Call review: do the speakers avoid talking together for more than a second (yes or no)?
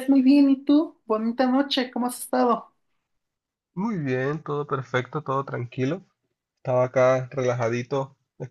yes